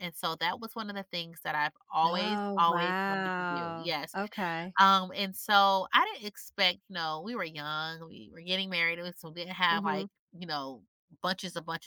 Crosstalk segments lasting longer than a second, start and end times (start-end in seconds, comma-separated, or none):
2.0-4.2